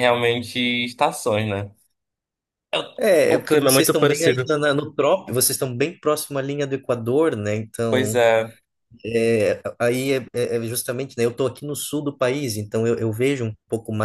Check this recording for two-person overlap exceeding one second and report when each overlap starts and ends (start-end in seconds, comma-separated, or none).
3.3-4.5